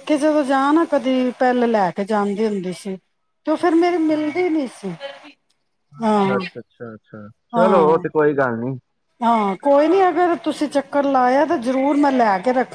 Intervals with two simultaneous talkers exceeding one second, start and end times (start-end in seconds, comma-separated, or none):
none